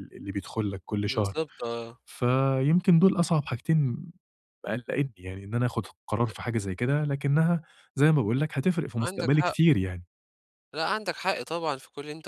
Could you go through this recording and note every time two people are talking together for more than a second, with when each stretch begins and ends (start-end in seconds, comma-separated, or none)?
none